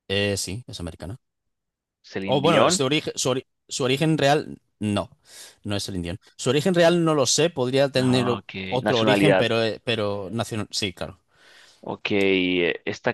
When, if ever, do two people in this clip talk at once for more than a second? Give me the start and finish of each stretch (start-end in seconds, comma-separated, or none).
7.9-9.5